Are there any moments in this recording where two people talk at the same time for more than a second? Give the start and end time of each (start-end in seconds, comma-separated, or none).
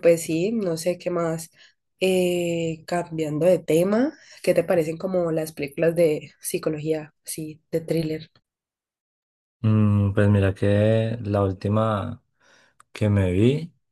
none